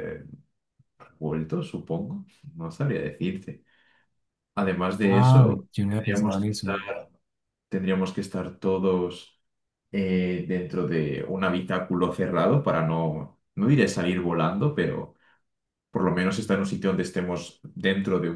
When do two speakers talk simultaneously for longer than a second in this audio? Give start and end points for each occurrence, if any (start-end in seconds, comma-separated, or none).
5.0-6.7